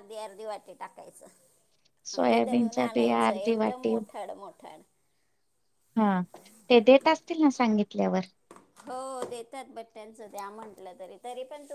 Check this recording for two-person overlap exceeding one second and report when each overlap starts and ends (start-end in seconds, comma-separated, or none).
2.1-3.9